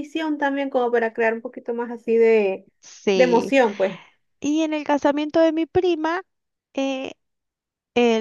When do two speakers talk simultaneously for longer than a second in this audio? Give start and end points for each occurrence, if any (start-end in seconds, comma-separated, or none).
none